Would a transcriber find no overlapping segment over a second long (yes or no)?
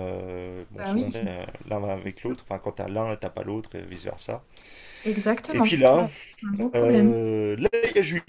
yes